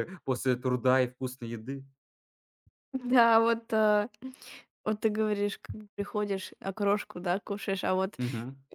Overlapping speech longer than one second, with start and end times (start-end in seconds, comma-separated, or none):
none